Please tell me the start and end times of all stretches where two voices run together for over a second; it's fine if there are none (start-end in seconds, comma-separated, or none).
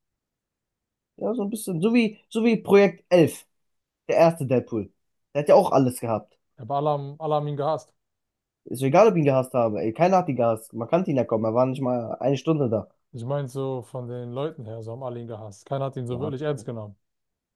none